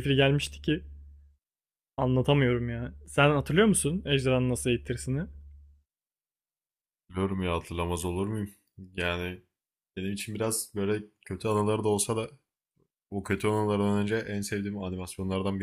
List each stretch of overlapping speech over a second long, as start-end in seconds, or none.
none